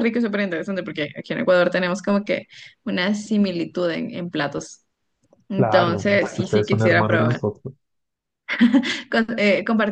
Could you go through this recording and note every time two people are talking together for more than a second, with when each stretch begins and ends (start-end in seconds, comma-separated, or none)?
5.6-7.4